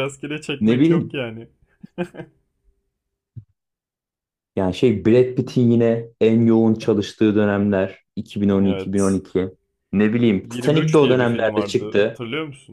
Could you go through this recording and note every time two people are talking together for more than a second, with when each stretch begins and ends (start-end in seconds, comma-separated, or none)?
10.4-12.2